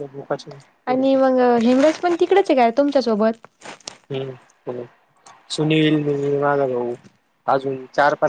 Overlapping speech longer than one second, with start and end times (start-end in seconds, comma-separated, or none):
none